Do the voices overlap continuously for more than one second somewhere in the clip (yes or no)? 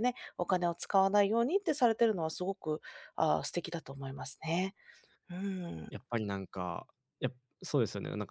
no